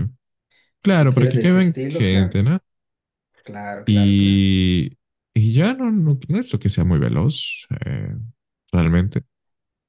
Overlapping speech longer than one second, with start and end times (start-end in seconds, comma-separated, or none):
0.8-2.4